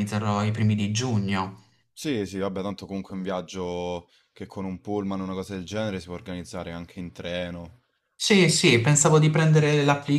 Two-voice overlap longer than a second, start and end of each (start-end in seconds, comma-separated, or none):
none